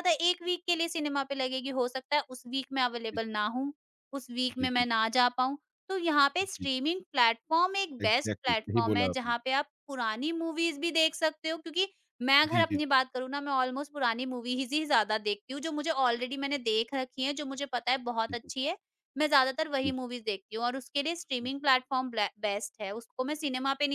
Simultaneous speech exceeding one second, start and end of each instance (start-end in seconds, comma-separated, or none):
8.0-9.3